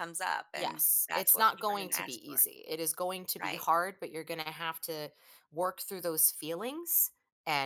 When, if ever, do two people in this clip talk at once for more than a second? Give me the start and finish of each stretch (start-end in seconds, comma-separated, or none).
0.5-2.4